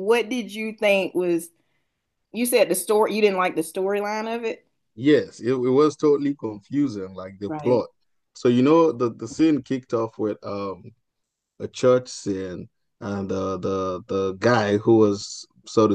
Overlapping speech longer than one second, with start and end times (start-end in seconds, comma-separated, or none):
none